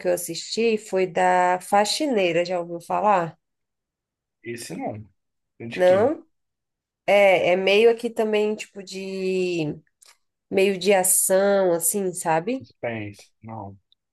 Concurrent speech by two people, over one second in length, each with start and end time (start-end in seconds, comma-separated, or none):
none